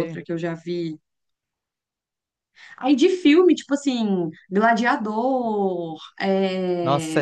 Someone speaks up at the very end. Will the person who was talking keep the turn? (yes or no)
no